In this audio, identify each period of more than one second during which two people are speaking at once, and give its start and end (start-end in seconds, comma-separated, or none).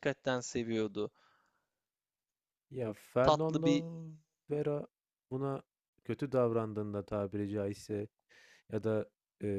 none